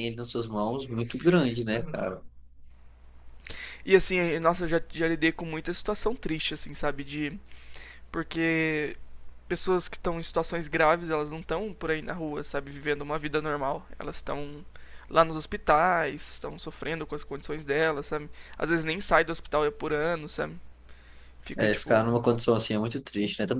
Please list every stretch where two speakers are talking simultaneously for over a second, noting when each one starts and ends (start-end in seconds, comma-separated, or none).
none